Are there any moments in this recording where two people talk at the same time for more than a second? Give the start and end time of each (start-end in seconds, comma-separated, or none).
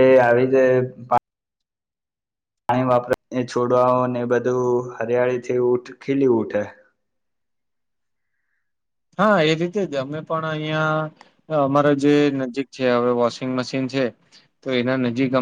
none